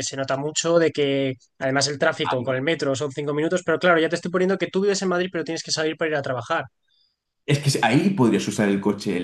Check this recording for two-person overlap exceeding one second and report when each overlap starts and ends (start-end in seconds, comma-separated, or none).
none